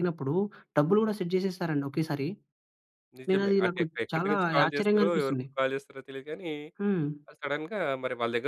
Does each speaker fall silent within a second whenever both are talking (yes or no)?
no